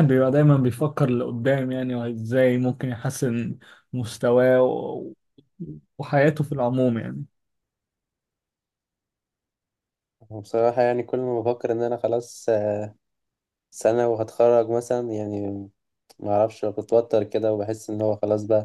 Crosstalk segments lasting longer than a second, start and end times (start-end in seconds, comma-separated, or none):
none